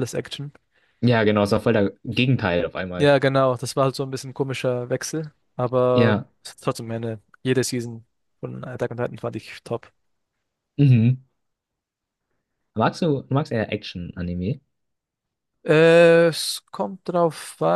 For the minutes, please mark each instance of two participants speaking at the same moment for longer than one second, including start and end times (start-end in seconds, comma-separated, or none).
none